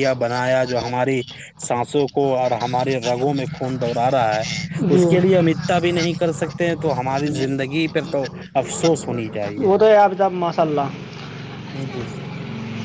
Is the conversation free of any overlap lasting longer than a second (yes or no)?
yes